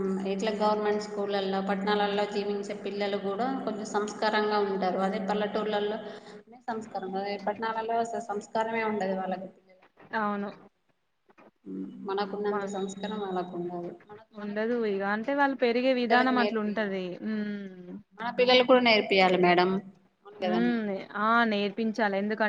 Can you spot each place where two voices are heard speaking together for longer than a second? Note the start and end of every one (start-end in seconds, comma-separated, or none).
14.4-17.1